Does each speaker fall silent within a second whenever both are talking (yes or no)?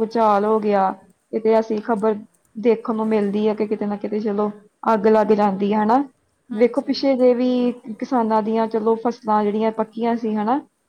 yes